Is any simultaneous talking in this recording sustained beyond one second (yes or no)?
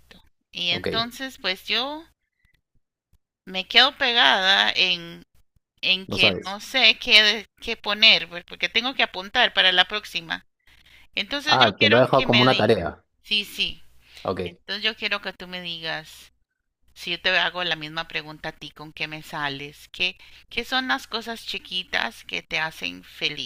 yes